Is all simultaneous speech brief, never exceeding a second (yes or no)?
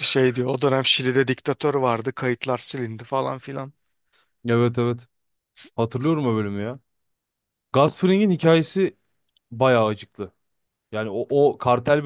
yes